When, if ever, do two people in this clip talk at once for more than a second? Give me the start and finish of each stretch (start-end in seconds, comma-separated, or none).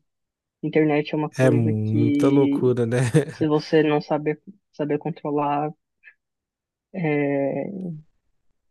1.4-2.6